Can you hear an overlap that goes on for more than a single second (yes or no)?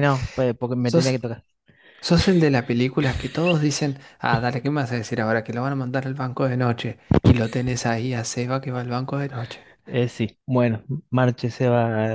no